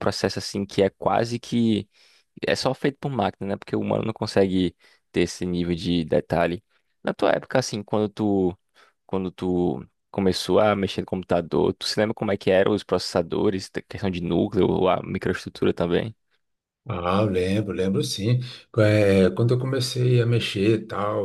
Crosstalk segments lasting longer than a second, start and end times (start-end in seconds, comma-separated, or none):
none